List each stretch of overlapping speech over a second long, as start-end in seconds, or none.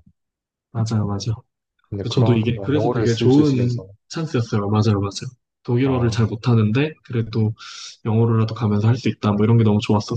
2.1-3.9